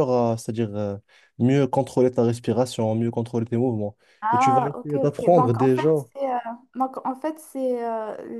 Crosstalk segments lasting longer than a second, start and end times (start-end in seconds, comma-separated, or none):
4.3-5.9